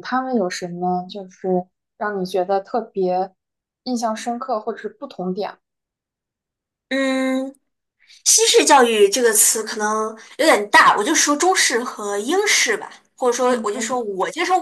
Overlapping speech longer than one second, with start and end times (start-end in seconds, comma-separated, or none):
none